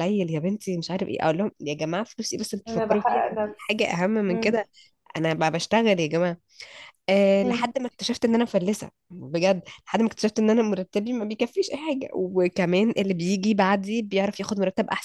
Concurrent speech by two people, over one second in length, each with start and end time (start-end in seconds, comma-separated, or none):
2.7-4.6